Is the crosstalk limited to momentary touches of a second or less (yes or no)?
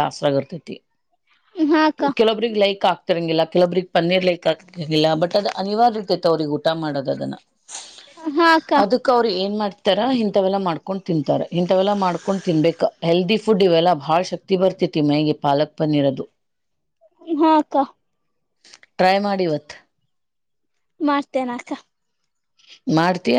yes